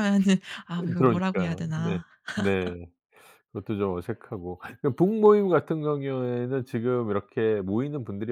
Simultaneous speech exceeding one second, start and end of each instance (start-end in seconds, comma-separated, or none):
0.8-2.0